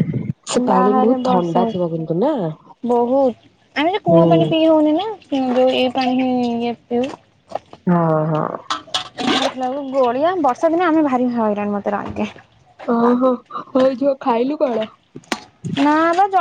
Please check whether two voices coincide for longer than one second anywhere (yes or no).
yes